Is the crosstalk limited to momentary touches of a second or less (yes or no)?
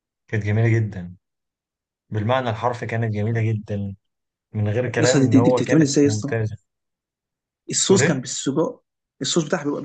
no